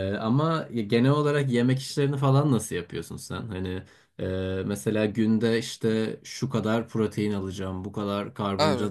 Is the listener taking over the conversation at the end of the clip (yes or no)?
no